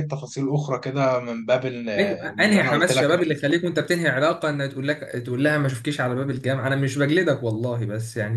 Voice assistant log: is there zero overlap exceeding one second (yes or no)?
no